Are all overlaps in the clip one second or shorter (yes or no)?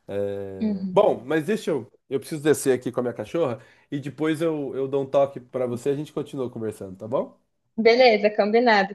yes